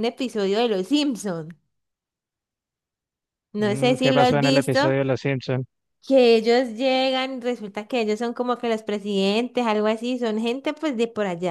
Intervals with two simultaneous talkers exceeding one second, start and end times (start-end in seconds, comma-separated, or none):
3.6-4.8